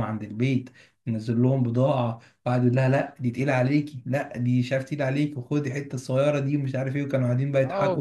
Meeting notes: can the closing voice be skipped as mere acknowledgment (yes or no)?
no